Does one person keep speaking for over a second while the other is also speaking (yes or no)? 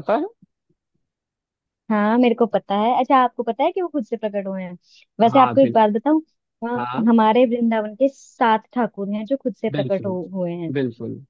no